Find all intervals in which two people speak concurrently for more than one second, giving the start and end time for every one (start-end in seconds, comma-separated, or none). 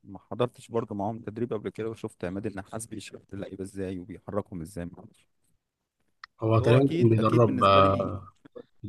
6.5-8.2